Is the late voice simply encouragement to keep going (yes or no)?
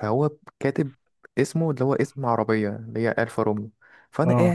yes